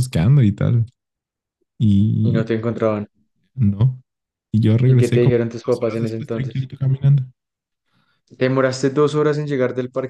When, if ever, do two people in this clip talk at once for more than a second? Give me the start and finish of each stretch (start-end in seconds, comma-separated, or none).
4.8-6.7